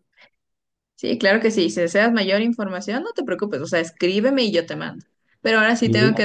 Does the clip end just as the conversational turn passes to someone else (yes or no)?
no